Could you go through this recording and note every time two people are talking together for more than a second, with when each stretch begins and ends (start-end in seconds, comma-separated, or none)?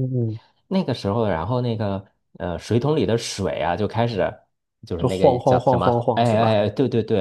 5.0-6.5